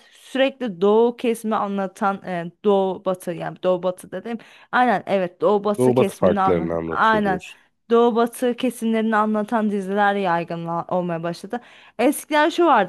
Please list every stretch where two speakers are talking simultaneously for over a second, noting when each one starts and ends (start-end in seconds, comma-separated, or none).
5.8-7.4